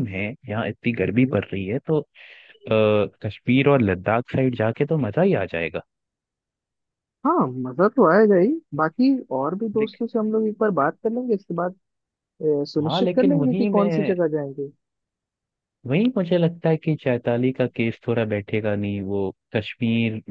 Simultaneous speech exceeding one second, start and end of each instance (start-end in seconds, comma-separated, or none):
12.9-14.1